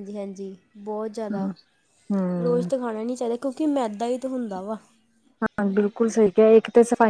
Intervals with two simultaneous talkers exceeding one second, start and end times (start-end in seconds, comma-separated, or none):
none